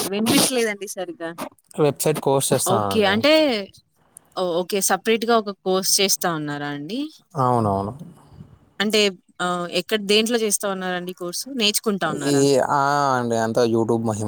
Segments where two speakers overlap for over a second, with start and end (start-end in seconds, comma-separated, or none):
none